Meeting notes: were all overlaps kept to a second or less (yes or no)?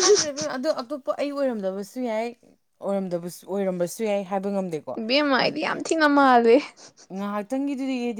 yes